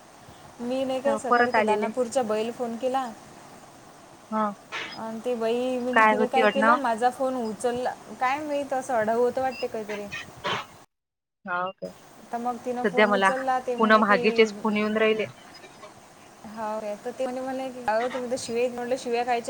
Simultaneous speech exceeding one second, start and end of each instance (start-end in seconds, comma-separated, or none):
none